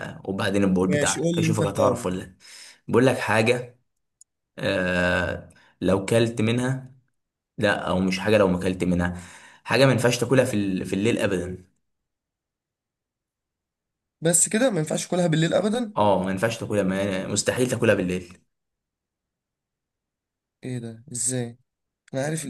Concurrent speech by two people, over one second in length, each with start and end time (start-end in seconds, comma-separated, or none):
0.8-2.1